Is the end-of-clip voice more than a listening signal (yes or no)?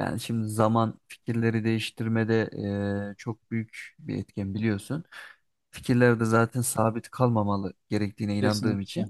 no